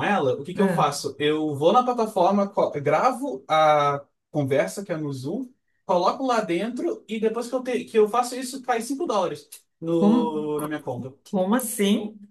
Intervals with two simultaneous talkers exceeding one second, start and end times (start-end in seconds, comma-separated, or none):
none